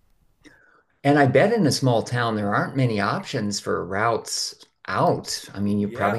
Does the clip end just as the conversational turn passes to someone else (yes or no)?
yes